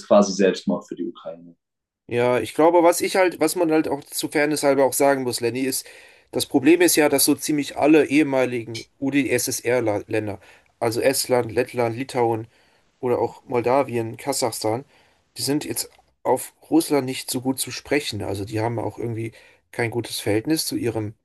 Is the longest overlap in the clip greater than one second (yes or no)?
no